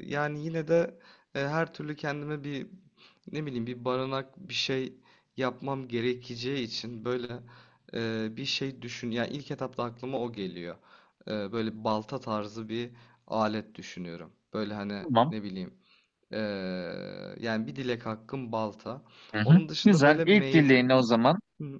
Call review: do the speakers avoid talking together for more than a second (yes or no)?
no